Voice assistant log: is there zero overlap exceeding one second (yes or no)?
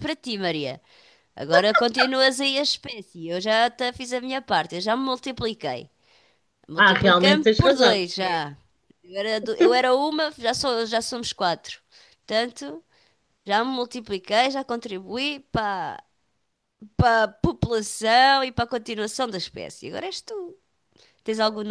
no